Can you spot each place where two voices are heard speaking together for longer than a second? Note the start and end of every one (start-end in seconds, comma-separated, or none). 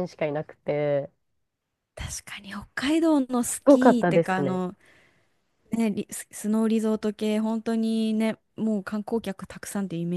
3.4-4.6